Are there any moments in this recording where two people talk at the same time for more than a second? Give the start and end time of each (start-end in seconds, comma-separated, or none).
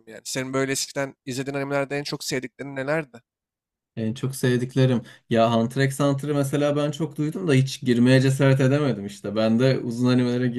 none